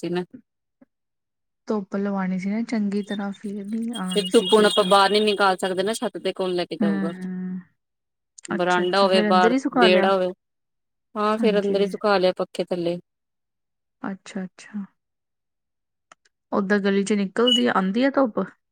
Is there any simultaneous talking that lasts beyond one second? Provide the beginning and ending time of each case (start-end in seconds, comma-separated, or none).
8.6-10.0